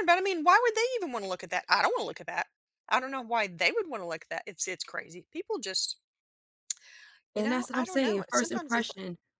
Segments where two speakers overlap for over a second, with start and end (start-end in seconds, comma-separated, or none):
7.3-8.9